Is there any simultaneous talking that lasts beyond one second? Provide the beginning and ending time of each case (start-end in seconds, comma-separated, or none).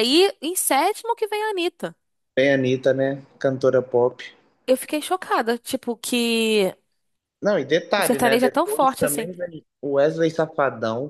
8.0-9.3